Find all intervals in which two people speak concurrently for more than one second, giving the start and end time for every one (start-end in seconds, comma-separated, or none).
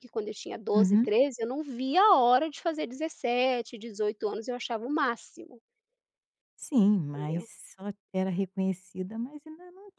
none